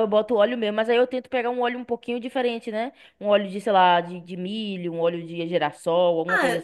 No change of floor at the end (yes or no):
no